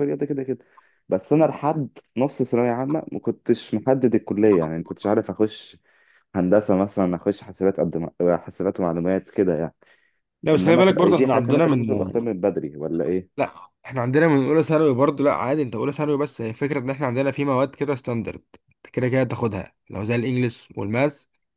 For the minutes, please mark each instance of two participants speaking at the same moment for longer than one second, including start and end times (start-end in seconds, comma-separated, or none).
10.5-11.8